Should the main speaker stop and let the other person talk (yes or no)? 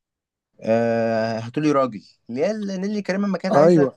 no